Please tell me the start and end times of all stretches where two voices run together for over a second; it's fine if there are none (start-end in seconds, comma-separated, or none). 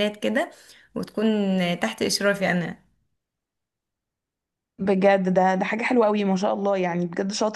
none